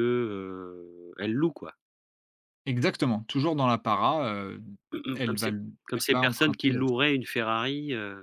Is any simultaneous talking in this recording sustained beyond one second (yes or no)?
yes